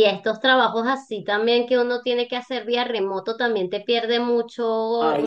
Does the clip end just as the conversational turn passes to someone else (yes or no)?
no